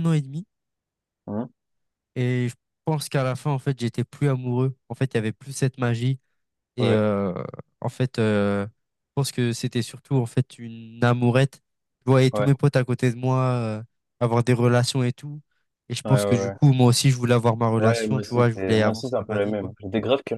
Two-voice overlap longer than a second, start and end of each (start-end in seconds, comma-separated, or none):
17.8-19.7